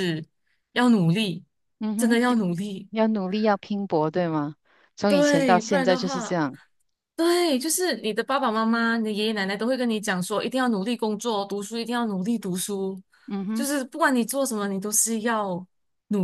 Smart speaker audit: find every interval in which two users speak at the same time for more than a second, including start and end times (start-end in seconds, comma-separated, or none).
5.1-6.4